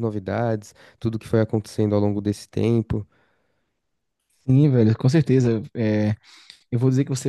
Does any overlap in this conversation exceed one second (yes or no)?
no